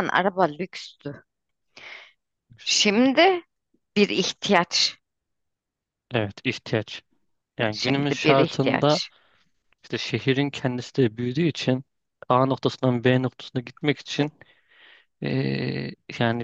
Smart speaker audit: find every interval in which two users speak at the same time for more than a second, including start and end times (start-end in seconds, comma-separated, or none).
7.7-9.0